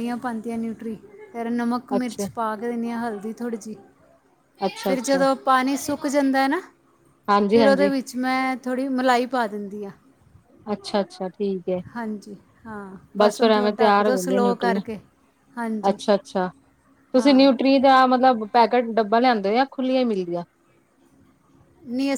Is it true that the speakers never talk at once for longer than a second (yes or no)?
no